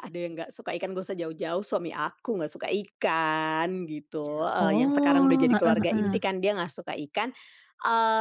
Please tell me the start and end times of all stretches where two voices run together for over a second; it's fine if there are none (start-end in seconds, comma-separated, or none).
4.6-6.2